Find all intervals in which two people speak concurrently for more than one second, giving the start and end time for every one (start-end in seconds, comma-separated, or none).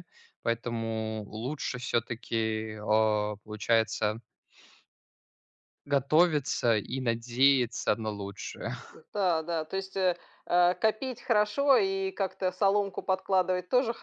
none